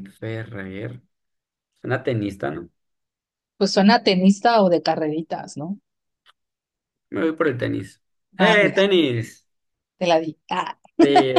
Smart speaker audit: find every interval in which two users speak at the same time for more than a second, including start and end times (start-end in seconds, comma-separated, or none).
none